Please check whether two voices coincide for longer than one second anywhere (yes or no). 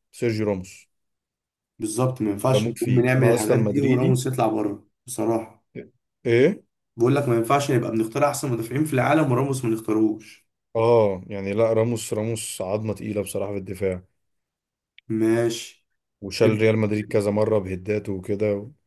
yes